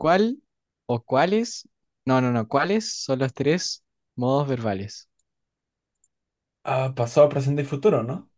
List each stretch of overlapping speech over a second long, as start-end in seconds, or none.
none